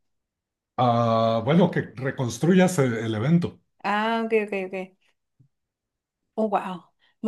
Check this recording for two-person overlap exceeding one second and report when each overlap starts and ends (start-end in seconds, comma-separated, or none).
none